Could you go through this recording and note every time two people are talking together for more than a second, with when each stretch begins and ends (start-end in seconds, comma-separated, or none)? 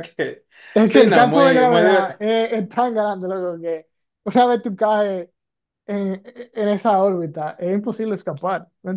0.8-2.2